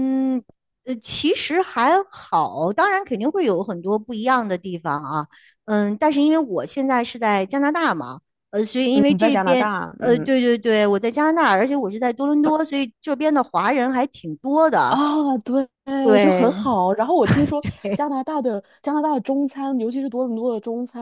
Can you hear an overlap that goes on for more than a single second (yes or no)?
yes